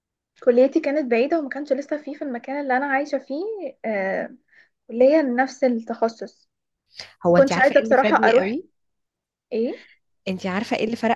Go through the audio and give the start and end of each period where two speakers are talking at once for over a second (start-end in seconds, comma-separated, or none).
7.3-8.6